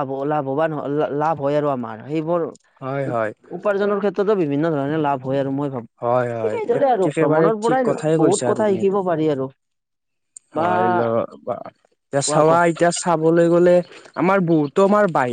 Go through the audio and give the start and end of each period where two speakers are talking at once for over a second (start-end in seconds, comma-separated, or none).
6.5-9.0